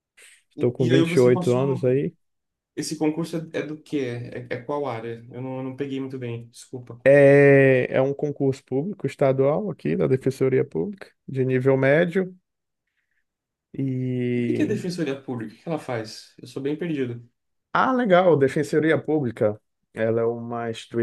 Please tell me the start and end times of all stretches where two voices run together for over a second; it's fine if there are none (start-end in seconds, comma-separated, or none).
0.6-2.1